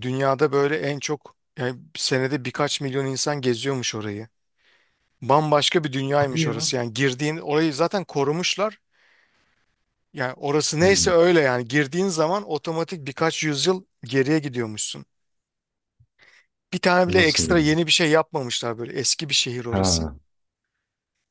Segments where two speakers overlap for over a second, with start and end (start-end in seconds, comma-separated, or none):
none